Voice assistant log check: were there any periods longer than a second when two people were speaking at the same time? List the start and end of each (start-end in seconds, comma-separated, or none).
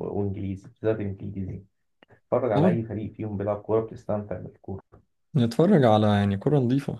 none